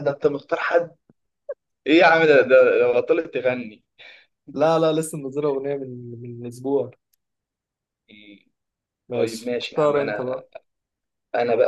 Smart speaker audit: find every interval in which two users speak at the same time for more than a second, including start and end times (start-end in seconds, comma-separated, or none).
9.1-10.4